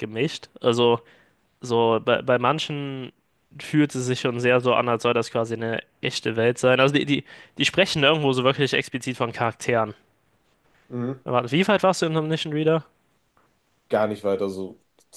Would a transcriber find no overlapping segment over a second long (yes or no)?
yes